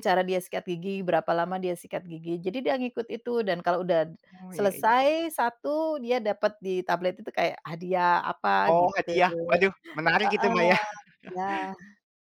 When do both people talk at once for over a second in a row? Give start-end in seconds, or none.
none